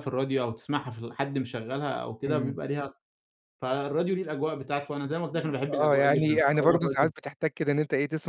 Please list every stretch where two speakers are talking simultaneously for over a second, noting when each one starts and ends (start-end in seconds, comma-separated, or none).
5.3-7.1